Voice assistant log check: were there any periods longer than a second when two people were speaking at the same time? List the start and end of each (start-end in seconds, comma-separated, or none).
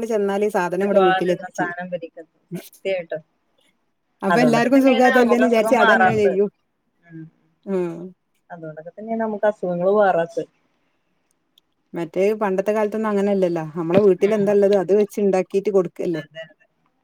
4.3-6.4